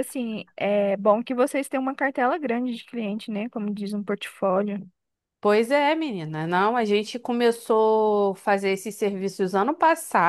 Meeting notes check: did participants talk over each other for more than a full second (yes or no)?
no